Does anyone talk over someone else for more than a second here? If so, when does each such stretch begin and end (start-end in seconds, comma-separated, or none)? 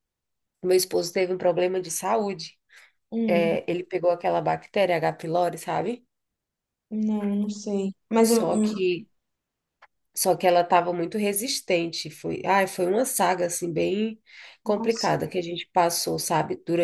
none